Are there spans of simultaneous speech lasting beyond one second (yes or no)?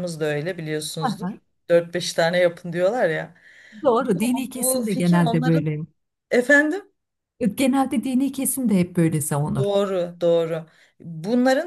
yes